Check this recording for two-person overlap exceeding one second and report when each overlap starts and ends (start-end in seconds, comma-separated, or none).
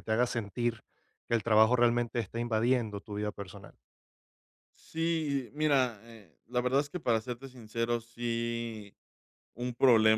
none